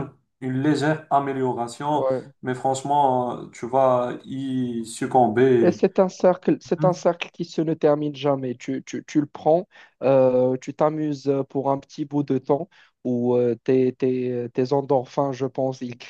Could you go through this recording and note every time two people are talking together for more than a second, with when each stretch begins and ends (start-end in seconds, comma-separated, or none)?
none